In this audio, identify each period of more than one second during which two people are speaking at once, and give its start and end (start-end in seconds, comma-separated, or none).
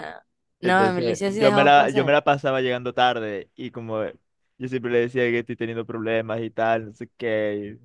0.6-2.1